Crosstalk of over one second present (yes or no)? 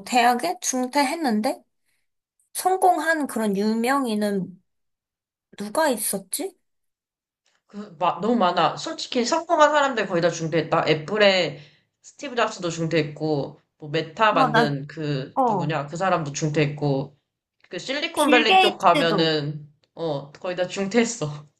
yes